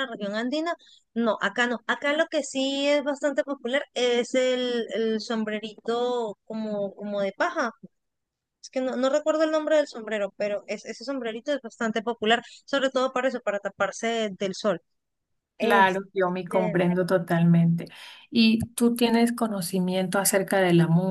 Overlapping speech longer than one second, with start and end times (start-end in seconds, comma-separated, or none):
15.6-16.8